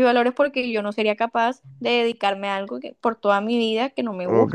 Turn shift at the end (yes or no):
yes